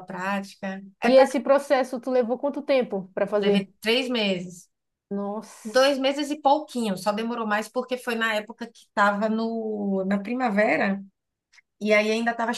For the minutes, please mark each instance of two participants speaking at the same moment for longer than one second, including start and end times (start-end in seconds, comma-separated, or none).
none